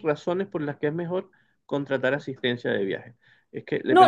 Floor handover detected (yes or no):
yes